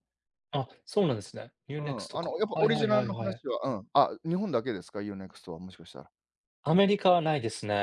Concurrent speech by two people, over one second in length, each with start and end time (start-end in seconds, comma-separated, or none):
1.8-3.4